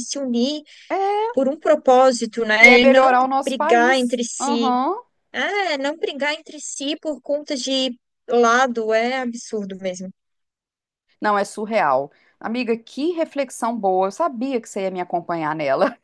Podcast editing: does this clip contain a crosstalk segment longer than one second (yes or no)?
yes